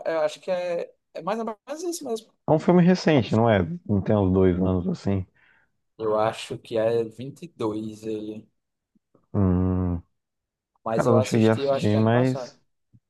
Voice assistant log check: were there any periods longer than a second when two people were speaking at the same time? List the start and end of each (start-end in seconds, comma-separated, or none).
10.9-12.5